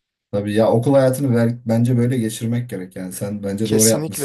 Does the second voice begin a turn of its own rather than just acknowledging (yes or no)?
yes